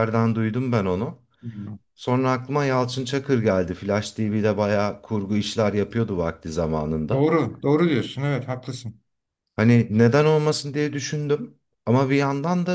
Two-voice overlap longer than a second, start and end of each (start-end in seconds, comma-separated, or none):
none